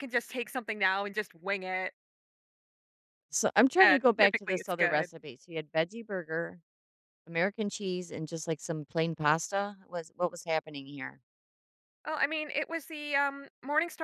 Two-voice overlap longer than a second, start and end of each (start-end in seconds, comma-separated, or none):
3.8-5.1